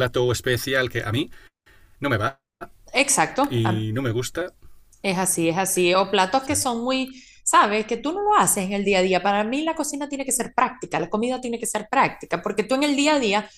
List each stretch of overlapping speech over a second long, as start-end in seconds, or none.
none